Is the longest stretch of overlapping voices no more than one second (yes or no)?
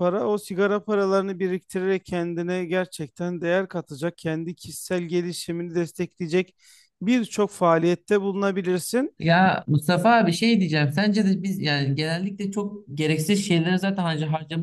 yes